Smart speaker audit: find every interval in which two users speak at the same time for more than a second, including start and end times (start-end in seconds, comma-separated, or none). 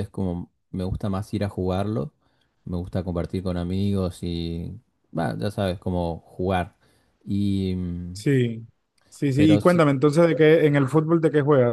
none